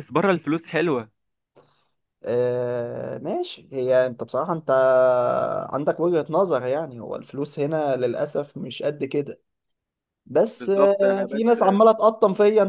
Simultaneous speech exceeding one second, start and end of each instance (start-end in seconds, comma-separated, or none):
10.6-11.8